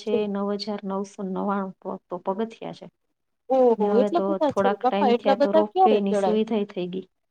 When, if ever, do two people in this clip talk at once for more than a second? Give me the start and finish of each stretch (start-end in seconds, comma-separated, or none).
3.8-6.0